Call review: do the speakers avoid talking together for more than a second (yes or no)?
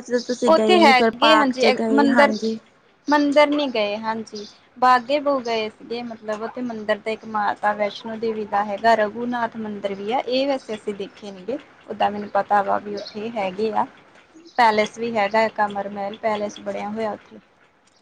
yes